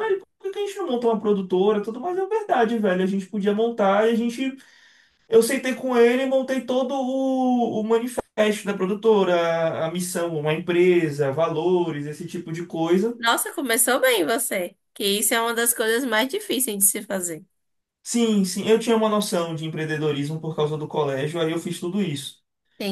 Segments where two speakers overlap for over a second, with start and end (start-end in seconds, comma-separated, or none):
none